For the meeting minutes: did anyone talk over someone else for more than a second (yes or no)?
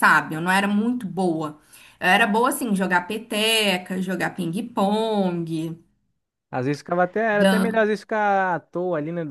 no